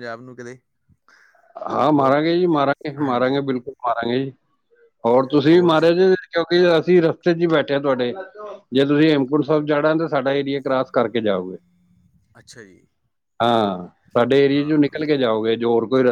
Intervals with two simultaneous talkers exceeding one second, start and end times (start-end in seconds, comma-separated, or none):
none